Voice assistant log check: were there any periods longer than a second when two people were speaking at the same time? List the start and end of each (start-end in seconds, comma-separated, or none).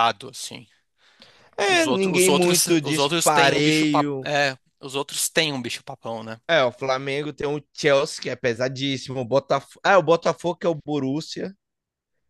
1.7-4.3